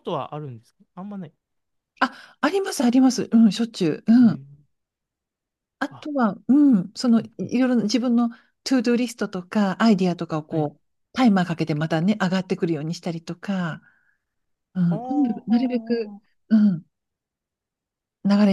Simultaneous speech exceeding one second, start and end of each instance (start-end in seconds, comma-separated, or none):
14.9-16.2